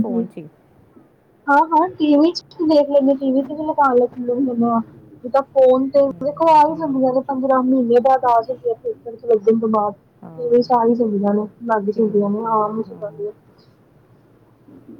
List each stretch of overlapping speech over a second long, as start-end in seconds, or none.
6.0-7.3